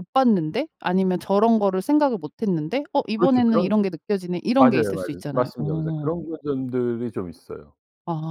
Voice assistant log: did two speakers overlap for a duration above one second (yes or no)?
yes